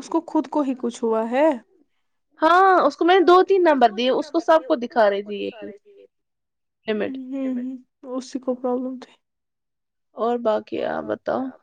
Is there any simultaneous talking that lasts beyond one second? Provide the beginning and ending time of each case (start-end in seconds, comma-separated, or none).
3.0-5.7